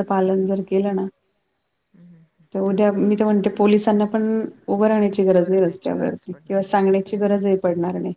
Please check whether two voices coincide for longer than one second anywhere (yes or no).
yes